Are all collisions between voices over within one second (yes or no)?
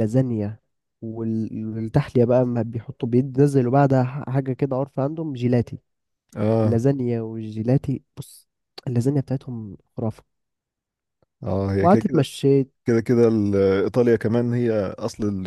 yes